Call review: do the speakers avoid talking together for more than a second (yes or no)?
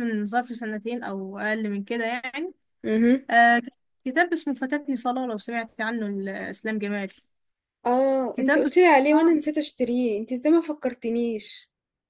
yes